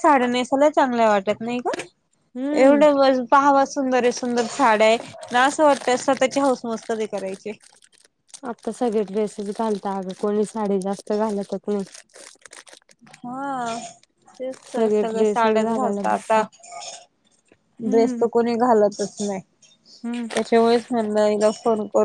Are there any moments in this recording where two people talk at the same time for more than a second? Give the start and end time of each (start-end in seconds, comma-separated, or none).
14.8-16.4